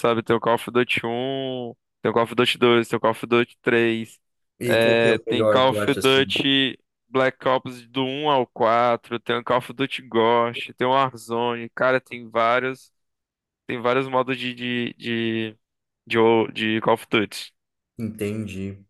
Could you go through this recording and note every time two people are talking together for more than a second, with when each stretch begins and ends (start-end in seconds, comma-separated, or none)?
4.7-6.2